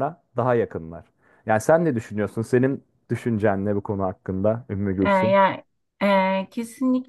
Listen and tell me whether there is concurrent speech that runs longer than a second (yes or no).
no